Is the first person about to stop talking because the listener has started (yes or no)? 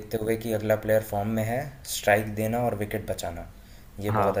no